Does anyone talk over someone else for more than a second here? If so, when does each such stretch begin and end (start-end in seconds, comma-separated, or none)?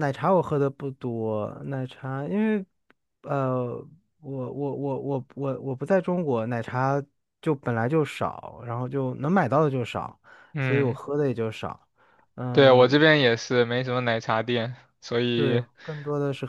none